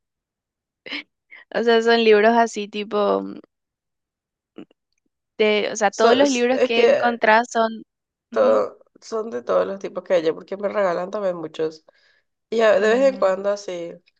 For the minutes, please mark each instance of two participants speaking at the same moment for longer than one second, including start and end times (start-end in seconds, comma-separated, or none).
5.9-7.2